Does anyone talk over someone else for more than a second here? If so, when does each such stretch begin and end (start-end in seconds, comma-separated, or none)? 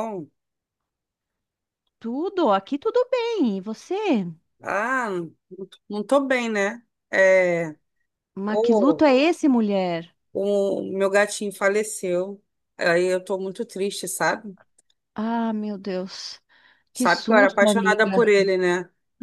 16.9-18.3